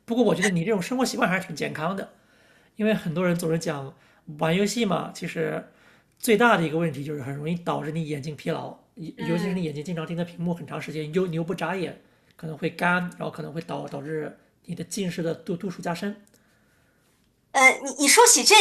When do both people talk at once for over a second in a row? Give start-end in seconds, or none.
none